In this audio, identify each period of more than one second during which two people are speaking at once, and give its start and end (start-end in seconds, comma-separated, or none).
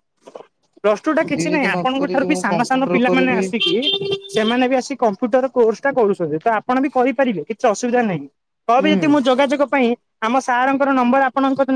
1.1-3.4